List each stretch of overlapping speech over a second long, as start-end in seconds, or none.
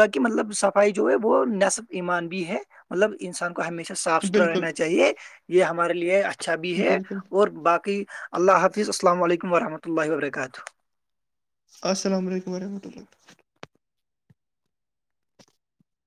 none